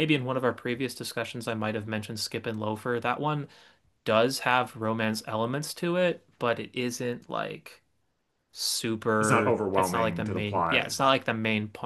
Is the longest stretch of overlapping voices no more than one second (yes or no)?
no